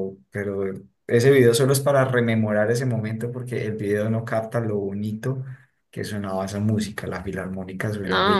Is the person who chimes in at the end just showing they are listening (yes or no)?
no